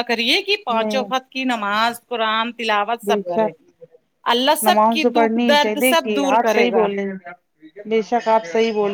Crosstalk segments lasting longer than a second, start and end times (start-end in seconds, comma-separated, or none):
4.7-6.8